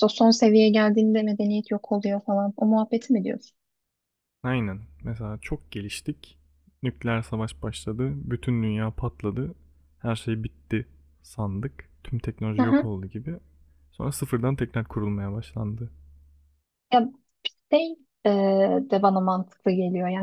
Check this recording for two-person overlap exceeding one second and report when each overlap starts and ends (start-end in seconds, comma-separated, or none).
none